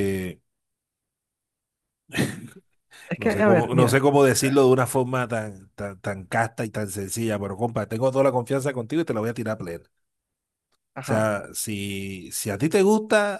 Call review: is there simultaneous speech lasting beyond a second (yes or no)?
yes